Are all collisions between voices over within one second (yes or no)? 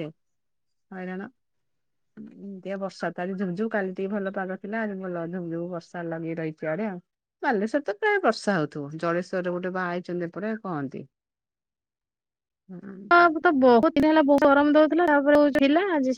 yes